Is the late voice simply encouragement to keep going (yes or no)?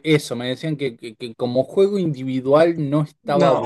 yes